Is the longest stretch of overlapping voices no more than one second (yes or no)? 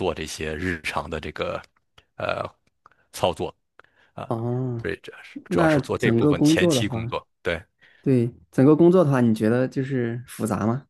no